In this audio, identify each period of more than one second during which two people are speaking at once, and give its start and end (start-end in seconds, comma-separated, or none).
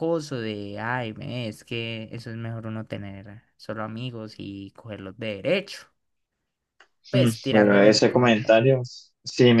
7.1-8.6